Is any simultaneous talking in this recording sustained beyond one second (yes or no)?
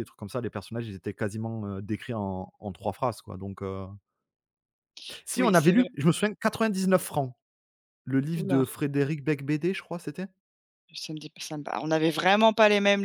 no